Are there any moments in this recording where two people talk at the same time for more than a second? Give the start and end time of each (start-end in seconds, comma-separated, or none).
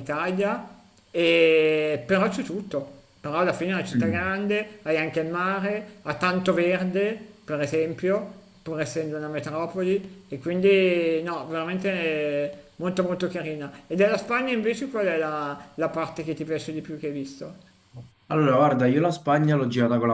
none